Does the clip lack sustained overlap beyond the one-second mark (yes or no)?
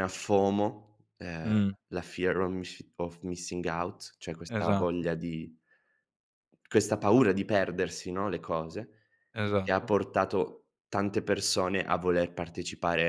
yes